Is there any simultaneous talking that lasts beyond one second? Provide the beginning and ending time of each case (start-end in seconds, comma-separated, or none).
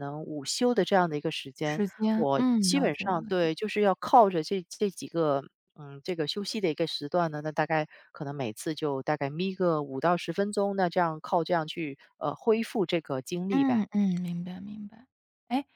1.6-3.5